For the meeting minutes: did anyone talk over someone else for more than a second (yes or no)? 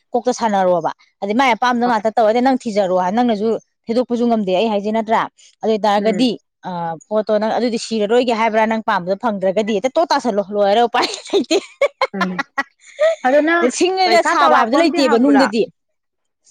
yes